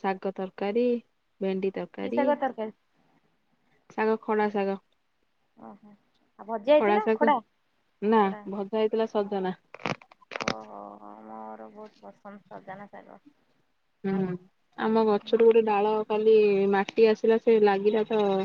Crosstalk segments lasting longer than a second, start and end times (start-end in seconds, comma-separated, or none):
none